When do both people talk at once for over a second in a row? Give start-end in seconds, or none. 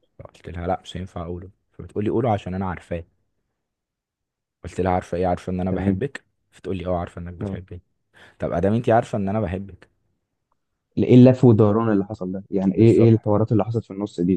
none